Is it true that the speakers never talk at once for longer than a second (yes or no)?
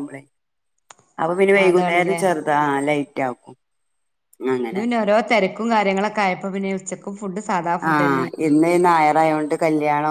yes